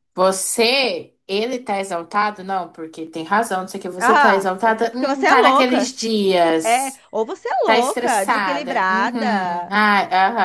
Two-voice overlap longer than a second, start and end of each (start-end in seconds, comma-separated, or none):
4.0-6.0, 7.6-9.7